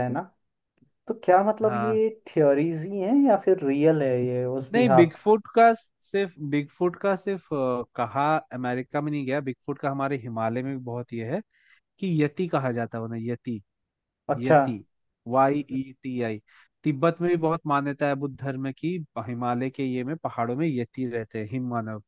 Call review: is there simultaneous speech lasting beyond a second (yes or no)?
no